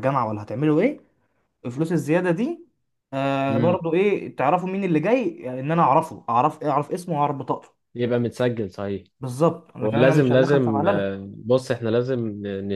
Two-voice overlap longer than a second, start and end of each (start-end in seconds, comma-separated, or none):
9.8-11.1